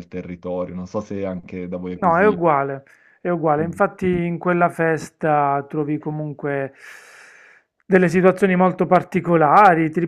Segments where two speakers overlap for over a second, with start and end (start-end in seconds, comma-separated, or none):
none